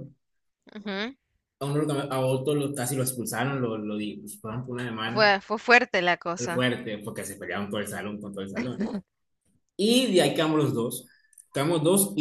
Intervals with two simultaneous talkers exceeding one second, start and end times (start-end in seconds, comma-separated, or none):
none